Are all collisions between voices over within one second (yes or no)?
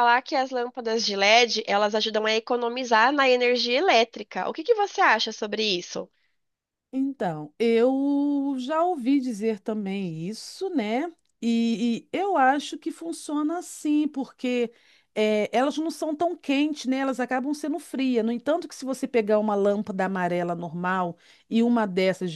yes